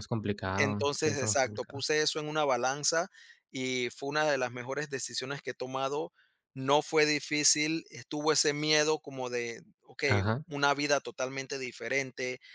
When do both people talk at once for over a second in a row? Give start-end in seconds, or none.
0.6-1.8